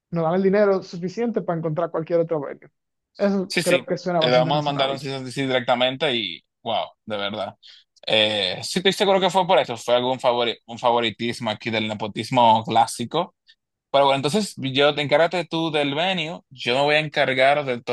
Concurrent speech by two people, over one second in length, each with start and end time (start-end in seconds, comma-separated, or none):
3.5-5.0